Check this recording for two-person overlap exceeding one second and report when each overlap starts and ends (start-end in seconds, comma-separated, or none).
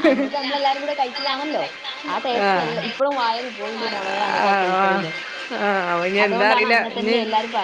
none